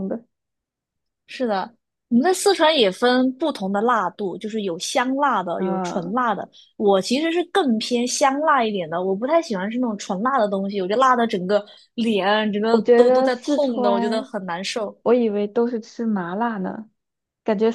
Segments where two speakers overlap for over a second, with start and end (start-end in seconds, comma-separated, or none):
12.7-14.3